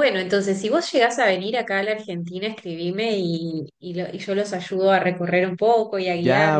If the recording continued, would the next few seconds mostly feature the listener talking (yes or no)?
yes